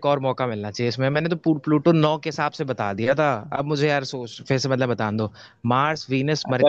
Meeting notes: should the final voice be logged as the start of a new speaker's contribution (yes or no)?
yes